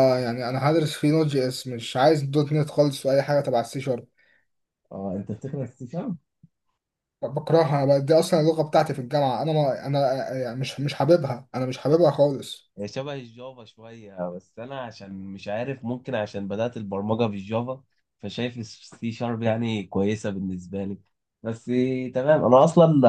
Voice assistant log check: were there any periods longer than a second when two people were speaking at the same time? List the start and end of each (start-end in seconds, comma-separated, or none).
none